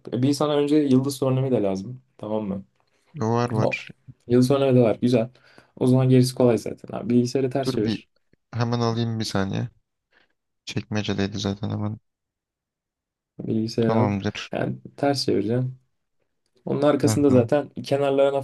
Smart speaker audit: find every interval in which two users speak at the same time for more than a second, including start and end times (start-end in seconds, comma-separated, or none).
none